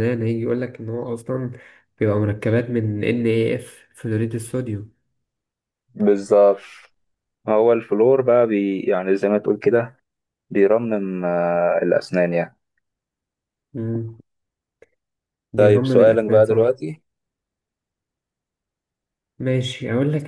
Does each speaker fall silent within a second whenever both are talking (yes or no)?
no